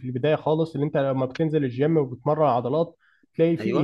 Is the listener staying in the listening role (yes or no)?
yes